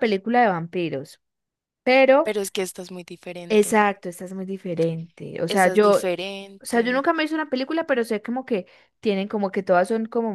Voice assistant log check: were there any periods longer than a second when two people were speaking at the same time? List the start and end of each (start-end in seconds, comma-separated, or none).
none